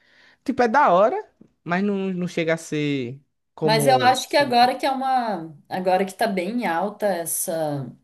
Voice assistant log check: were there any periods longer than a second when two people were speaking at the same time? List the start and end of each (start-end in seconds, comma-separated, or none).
none